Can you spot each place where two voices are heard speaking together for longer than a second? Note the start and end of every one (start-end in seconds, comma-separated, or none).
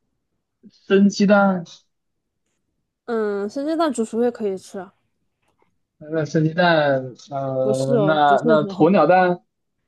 7.6-8.9